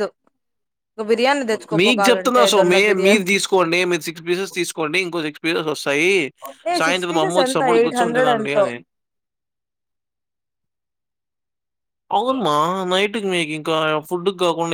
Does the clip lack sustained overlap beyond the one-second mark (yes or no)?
no